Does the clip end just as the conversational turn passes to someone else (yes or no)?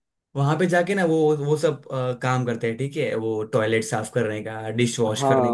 yes